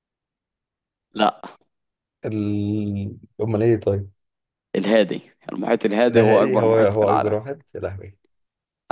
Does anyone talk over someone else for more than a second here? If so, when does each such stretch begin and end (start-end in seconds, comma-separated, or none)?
6.1-7.3